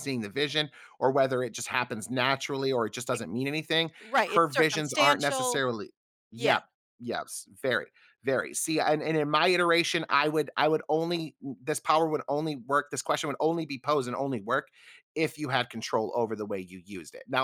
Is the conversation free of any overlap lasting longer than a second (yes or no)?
no